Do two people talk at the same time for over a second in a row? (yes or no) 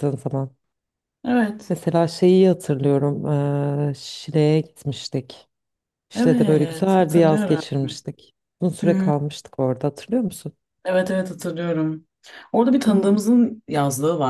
yes